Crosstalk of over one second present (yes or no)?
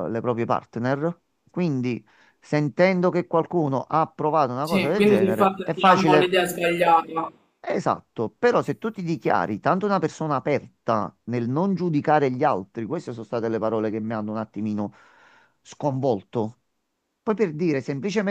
yes